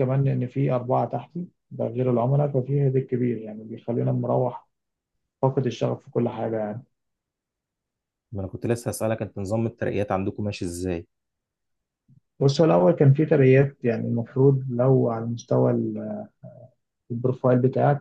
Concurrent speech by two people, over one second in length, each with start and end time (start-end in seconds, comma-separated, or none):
none